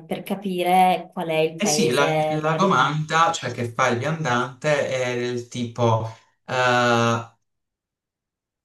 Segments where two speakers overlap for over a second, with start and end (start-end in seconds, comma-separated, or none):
1.6-3.0